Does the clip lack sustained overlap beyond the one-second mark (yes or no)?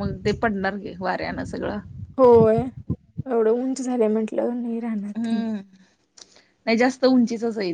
yes